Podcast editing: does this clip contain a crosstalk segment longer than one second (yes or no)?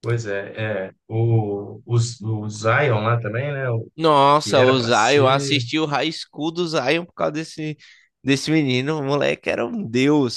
yes